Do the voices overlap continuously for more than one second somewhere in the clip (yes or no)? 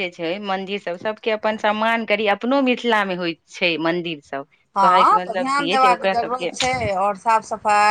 yes